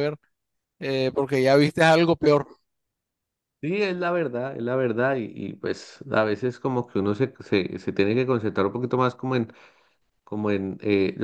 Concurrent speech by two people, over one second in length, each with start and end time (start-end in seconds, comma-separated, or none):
none